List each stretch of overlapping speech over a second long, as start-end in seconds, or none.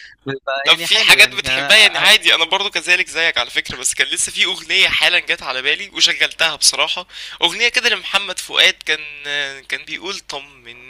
0.7-2.1